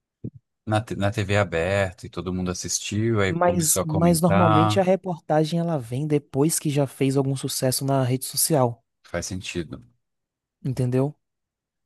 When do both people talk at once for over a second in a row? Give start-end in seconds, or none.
3.3-4.8